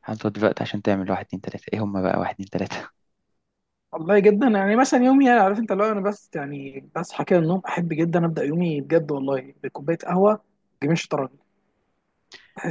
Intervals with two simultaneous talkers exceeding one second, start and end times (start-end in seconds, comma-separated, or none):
none